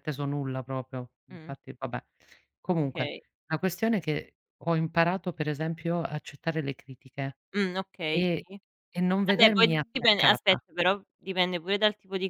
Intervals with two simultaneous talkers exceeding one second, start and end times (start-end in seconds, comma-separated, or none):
9.2-10.6